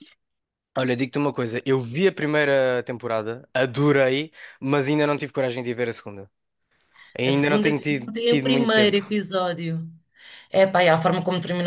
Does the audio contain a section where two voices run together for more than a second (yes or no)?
yes